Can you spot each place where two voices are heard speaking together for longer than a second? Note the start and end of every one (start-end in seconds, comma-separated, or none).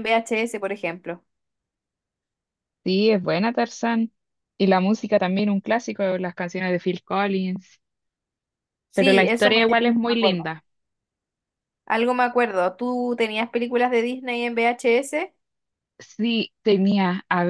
8.9-10.5